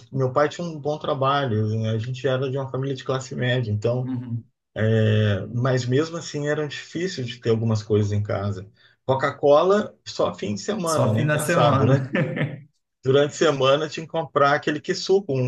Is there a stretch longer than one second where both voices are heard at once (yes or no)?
yes